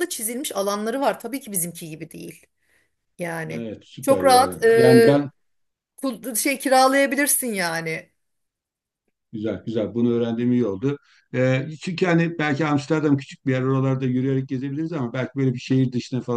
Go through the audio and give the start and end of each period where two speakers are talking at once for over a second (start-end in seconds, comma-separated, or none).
3.5-5.2